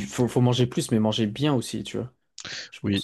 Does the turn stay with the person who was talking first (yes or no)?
no